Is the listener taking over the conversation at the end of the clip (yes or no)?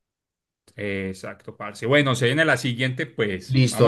yes